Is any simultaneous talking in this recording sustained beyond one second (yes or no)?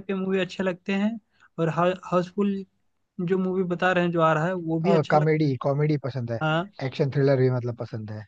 no